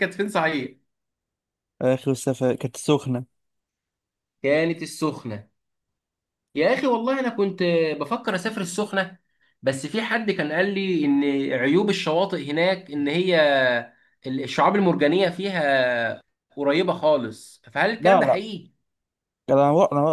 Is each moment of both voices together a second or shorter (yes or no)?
yes